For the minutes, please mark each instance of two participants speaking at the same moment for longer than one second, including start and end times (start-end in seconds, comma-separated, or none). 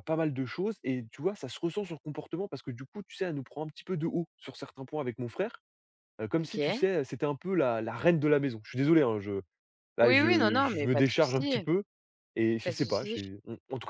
10.0-11.7